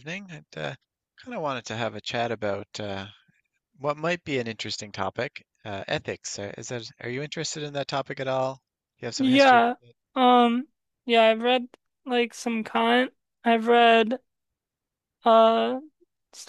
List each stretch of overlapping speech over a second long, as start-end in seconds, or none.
none